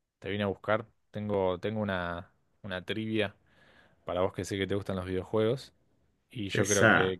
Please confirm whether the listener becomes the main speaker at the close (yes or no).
no